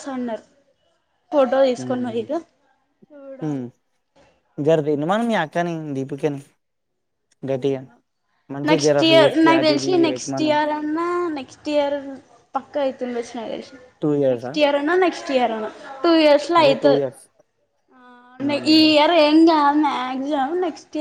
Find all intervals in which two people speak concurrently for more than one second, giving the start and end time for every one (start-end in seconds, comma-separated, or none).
8.7-10.5